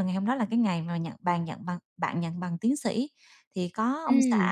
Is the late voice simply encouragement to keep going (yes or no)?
yes